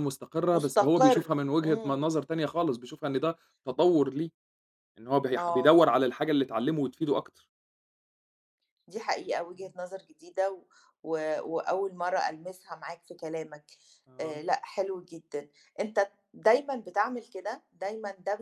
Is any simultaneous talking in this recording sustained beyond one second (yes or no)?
yes